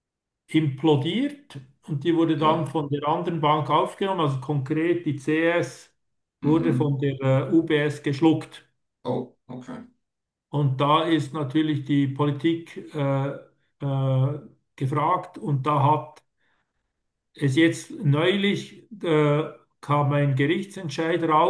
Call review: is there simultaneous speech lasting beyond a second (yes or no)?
no